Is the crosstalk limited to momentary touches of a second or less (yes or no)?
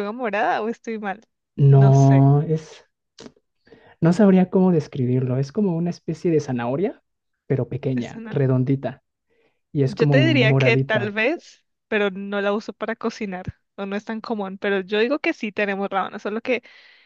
no